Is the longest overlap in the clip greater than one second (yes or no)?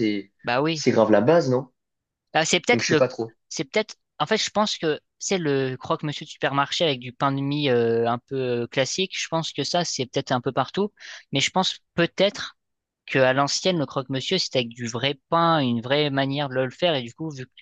no